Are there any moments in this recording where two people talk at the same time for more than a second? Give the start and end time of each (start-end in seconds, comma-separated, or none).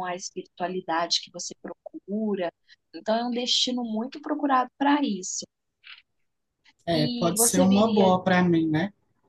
6.9-8.1